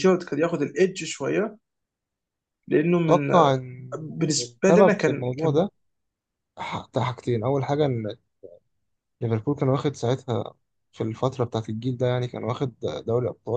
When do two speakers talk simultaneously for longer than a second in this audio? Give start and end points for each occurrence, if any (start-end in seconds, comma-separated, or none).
4.0-5.6